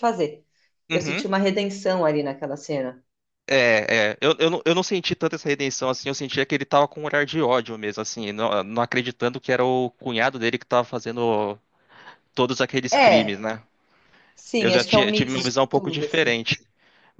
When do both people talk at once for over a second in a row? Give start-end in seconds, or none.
14.6-16.4